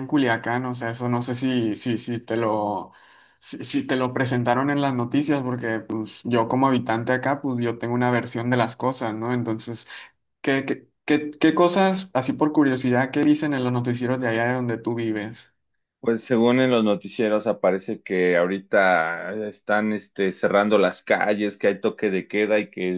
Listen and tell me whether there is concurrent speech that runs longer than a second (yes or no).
no